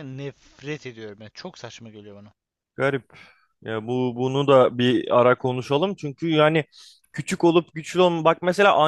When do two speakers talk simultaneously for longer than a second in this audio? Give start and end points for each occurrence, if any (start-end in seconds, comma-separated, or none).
none